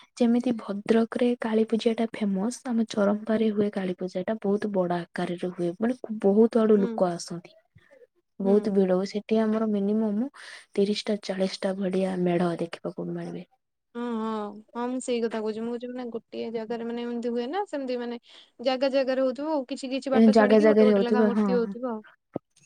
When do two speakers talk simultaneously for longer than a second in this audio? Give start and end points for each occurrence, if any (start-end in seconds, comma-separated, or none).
20.2-21.8